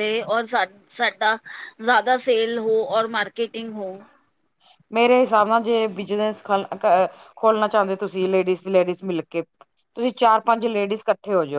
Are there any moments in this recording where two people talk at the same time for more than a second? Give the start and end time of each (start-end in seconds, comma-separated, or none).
none